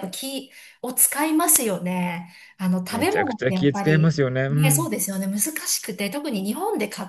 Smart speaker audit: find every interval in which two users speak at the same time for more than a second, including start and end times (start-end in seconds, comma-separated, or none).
2.9-4.9